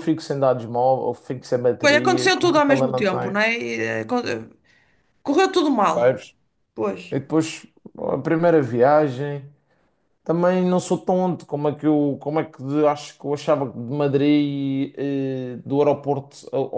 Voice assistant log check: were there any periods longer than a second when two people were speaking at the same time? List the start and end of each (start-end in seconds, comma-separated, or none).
1.8-3.3